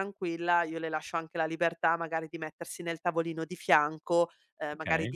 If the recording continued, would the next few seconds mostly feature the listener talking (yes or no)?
no